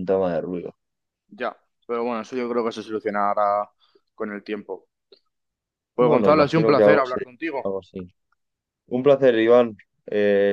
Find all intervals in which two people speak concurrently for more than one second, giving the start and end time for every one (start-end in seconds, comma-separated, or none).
6.0-7.3